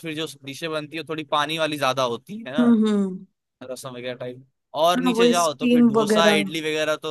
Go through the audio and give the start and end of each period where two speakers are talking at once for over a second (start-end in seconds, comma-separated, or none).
5.0-6.4